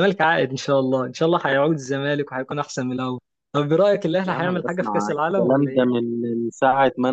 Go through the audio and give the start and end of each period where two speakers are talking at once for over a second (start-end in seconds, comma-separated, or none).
4.3-6.0